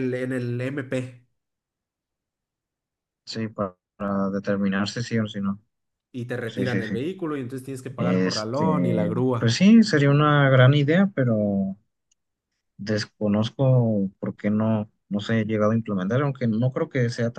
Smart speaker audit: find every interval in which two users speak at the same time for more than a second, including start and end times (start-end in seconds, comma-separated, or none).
8.0-9.6